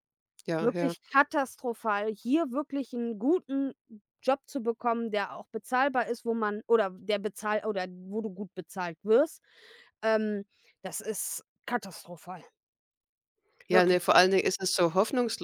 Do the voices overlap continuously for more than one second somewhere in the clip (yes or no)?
no